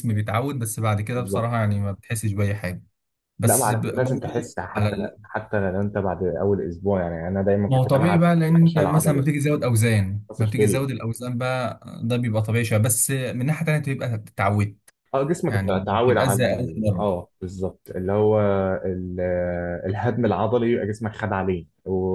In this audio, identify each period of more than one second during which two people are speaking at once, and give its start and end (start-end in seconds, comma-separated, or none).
3.5-5.2, 7.7-9.3, 15.5-17.1